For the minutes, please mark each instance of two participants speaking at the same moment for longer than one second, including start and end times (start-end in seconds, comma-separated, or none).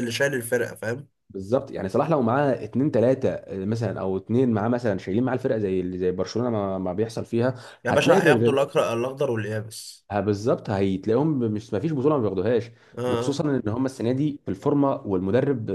none